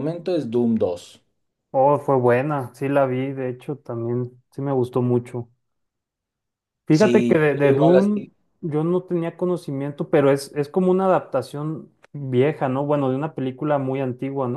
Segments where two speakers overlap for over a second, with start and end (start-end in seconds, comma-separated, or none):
6.9-8.3